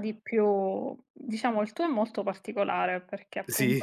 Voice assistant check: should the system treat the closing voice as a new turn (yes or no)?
no